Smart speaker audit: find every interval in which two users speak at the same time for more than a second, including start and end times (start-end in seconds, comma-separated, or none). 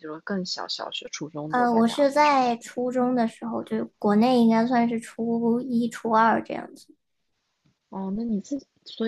1.5-2.7